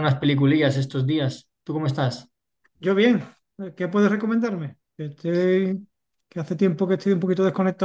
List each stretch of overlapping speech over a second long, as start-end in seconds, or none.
none